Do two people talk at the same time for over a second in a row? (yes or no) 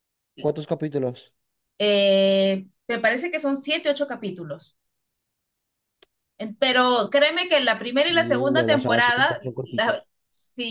yes